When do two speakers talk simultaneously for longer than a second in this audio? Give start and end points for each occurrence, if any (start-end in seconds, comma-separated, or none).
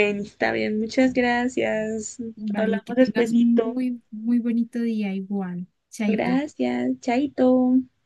2.6-3.8